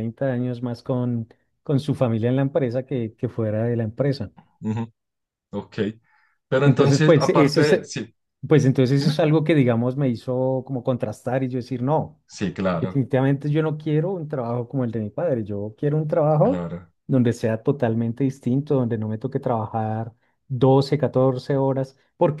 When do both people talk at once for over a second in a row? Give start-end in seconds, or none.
6.6-7.9